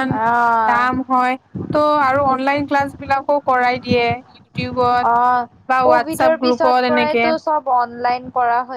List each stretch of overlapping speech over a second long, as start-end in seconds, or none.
5.9-7.2